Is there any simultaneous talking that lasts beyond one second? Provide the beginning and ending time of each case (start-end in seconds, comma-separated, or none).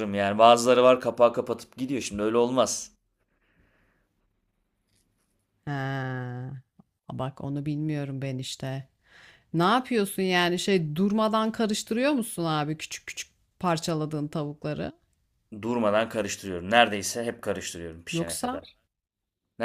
none